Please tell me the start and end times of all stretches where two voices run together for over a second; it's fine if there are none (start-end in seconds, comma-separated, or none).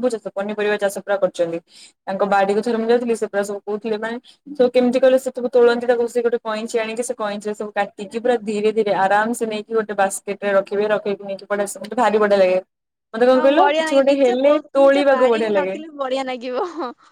13.3-15.8